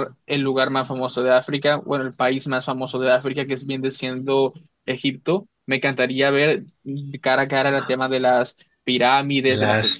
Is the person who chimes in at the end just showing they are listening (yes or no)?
no